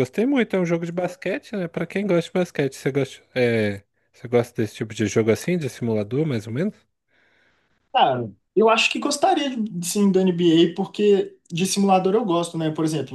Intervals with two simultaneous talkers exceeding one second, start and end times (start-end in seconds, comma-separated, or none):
none